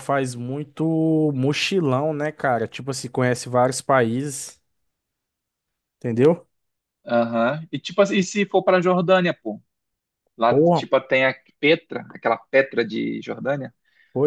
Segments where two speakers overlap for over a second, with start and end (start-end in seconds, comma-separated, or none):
none